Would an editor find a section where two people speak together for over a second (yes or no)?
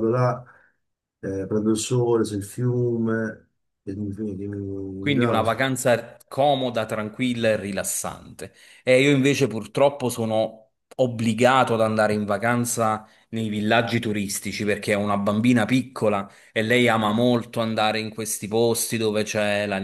no